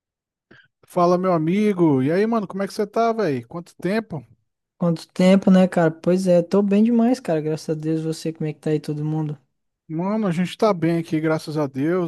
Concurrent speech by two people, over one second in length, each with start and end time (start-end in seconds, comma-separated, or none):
none